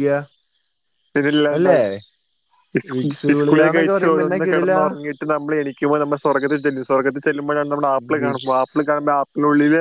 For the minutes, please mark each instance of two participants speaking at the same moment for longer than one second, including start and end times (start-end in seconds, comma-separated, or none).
3.3-4.8